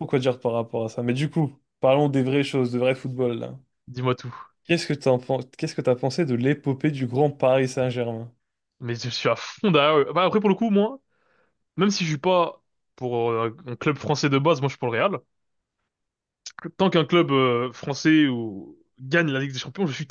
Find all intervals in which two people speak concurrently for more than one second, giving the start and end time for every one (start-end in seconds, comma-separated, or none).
none